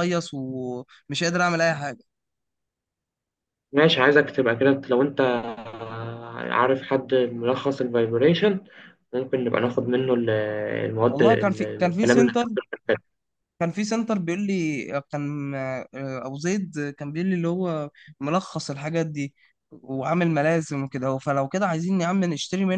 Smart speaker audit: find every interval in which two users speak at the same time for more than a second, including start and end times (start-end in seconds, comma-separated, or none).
11.1-12.4